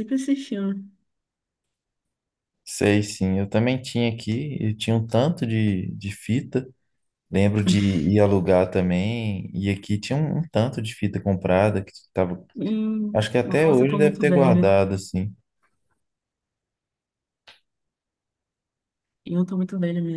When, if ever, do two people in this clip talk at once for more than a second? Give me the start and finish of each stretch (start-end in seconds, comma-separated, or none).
13.1-14.6